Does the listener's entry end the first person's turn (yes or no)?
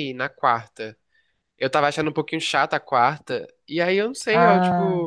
no